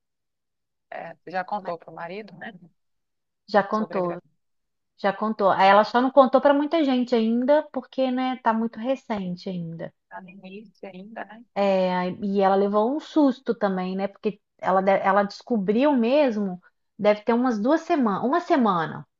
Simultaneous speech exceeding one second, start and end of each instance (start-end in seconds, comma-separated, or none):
none